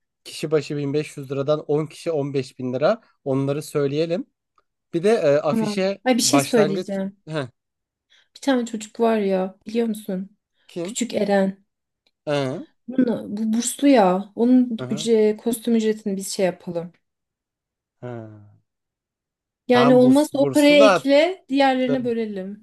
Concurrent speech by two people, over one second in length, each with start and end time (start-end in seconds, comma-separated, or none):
5.5-7.2, 19.7-21.1